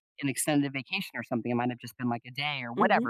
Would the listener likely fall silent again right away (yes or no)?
yes